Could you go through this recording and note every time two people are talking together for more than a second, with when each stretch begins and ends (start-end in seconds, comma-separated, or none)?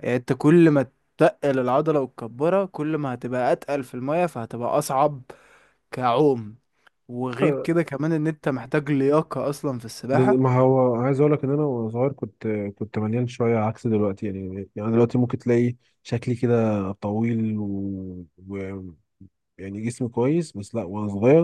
none